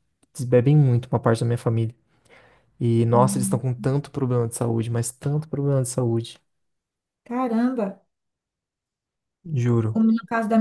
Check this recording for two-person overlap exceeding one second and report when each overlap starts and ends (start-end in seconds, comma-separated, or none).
none